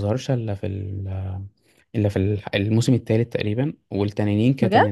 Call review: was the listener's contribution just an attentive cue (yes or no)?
yes